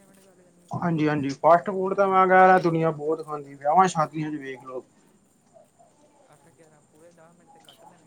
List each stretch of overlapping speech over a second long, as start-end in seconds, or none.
none